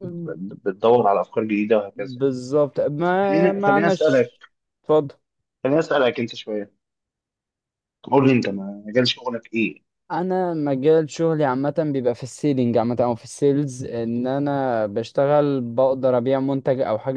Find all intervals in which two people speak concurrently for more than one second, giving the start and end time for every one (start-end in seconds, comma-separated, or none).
3.0-4.4